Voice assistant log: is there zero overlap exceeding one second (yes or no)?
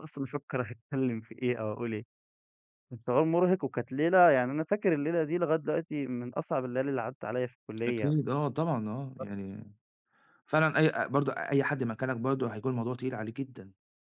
yes